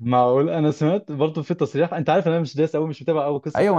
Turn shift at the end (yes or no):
yes